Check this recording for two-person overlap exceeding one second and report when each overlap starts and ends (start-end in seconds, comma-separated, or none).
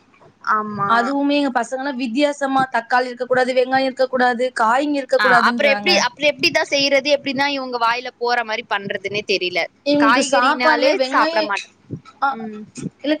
10.0-11.4